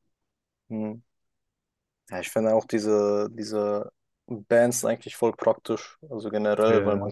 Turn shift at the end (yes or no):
no